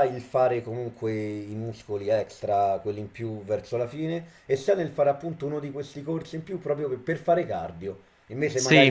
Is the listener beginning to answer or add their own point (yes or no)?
no